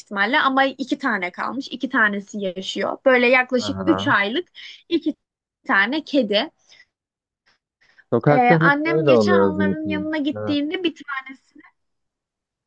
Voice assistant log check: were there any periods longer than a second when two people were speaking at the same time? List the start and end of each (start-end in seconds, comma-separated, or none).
8.2-10.6